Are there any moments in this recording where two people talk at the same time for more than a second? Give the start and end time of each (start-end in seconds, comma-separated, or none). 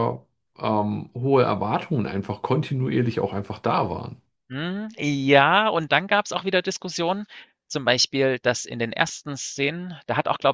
none